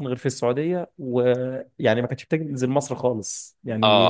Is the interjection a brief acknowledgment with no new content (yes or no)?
no